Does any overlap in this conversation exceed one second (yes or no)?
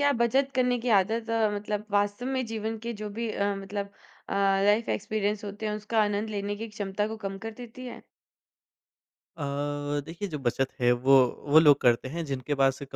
no